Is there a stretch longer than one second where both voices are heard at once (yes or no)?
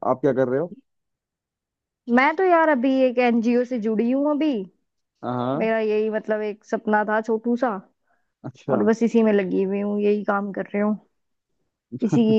no